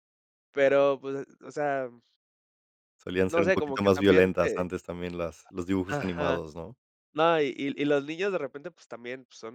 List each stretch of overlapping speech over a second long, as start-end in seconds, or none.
3.3-4.7